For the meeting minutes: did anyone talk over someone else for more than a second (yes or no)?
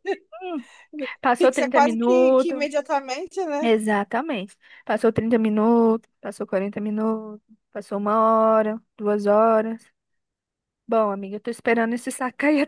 yes